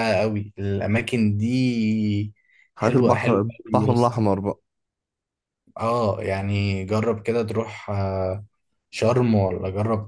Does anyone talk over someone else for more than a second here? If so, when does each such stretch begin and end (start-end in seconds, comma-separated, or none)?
2.8-4.2